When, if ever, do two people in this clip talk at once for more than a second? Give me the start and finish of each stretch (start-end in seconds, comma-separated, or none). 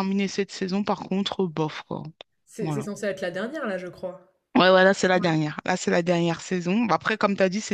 none